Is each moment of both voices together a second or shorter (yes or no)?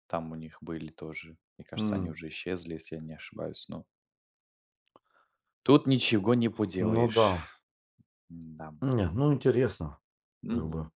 yes